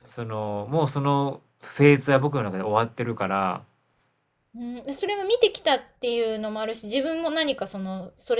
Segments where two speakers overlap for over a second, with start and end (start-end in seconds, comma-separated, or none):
none